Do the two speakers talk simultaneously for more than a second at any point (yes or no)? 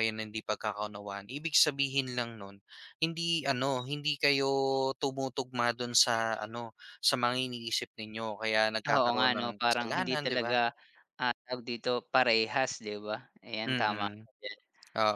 yes